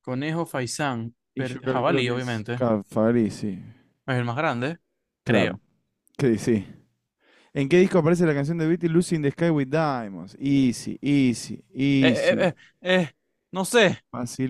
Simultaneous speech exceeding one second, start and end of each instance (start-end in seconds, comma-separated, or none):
1.3-2.7